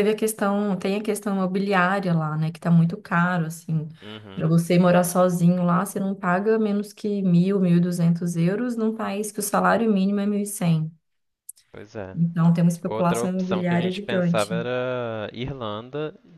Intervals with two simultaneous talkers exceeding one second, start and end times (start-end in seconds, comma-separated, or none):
12.9-14.5